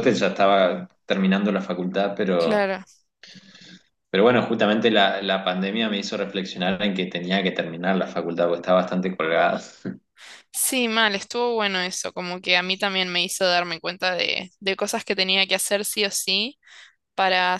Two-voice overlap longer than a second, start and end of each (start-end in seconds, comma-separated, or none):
none